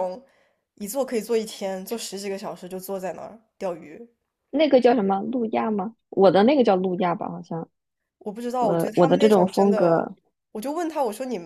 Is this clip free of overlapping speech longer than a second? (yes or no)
no